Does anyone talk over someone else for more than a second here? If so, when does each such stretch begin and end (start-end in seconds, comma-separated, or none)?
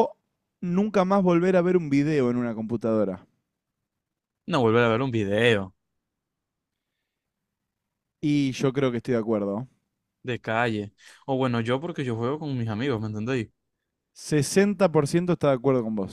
none